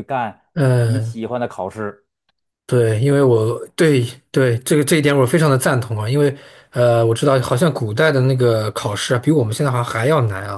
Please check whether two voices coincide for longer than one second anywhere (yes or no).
no